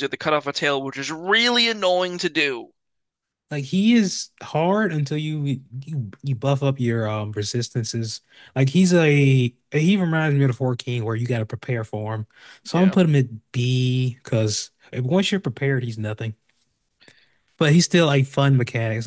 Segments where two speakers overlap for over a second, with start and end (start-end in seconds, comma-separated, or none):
none